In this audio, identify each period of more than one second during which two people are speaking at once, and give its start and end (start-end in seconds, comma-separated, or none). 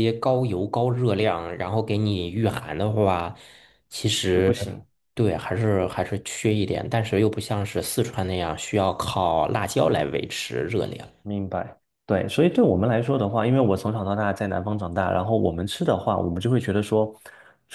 none